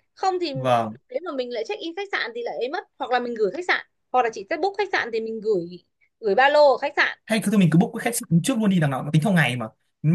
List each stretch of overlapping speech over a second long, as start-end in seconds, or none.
none